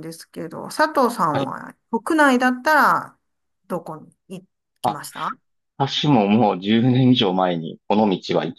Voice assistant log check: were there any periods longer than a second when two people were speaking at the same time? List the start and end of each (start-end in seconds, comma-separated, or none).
none